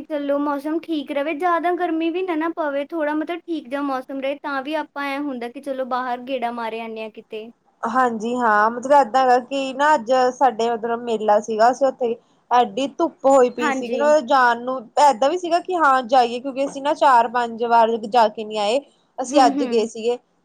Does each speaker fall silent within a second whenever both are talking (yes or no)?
yes